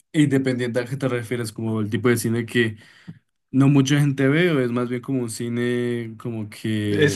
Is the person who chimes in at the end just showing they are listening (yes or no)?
no